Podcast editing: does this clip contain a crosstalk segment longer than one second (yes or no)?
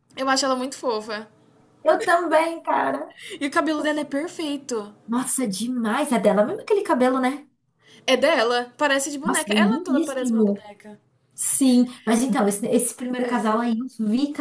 yes